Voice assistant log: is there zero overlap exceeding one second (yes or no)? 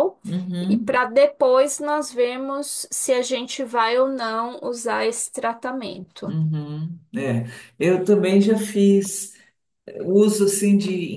yes